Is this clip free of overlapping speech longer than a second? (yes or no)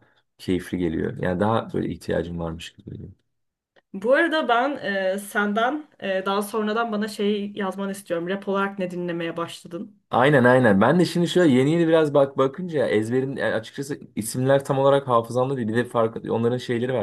yes